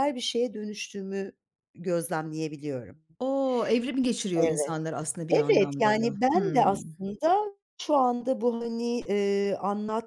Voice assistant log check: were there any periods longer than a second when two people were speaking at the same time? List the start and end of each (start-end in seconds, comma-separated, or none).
5.3-6.7